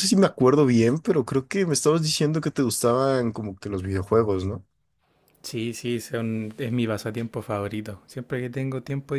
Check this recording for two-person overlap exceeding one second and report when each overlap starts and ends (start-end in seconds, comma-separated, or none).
none